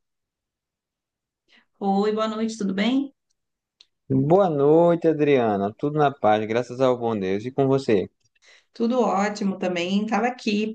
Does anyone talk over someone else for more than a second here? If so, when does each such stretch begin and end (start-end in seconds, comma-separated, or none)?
none